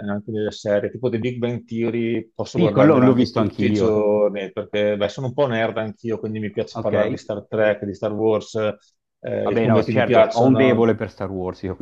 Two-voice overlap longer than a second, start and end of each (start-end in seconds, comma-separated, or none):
2.5-4.1, 9.4-10.9